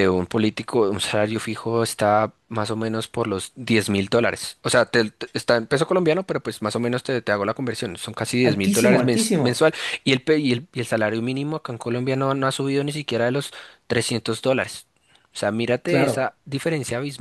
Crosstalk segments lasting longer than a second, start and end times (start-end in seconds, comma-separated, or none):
8.4-9.7